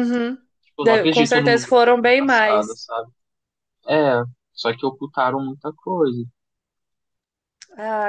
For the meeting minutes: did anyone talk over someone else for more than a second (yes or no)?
yes